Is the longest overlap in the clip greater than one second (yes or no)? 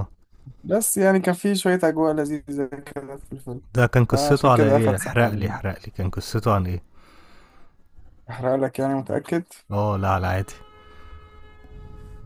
yes